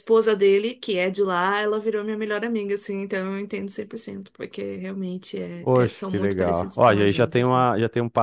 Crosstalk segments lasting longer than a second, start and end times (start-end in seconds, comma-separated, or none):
5.6-7.7